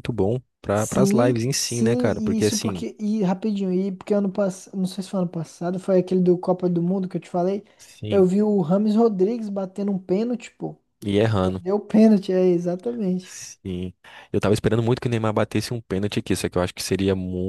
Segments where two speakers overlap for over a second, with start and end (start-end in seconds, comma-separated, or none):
0.8-2.9